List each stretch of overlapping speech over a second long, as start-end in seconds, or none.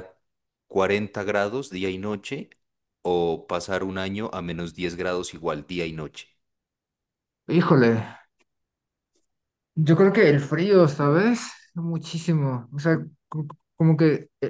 none